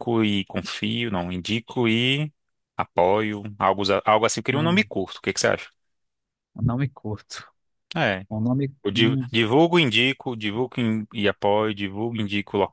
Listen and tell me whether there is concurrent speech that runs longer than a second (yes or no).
no